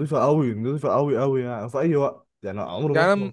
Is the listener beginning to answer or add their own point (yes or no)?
no